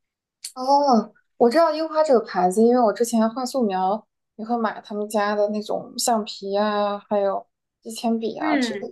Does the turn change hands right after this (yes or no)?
yes